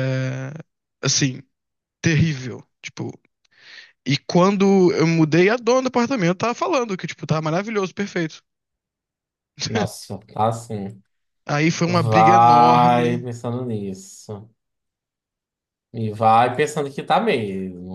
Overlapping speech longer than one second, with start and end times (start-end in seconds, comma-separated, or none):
11.9-13.3